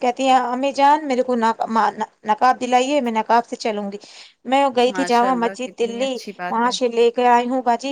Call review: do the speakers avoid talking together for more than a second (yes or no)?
no